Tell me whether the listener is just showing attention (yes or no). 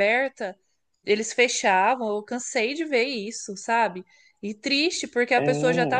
yes